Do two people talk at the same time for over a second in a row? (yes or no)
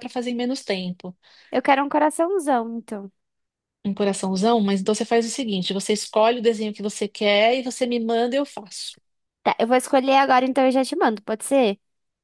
no